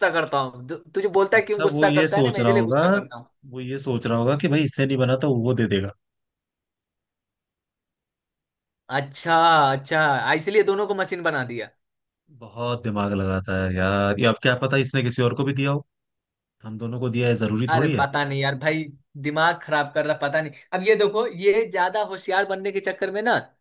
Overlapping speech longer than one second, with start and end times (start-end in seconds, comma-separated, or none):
1.4-2.8